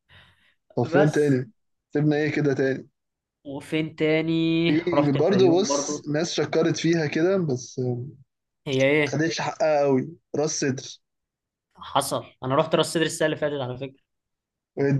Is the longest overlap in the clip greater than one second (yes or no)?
yes